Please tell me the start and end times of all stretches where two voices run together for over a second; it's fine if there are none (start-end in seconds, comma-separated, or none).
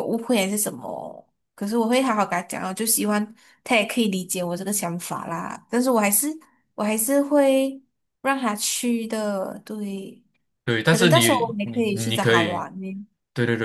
10.8-12.7